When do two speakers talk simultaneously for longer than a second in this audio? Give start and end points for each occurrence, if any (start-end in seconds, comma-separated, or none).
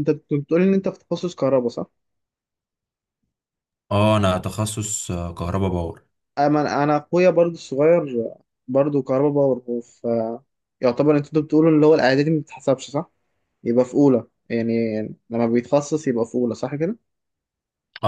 none